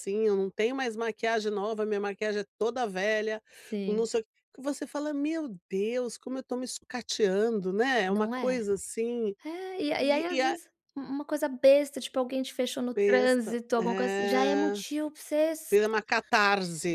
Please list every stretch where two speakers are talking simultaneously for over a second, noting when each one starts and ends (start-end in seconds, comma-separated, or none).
12.9-14.8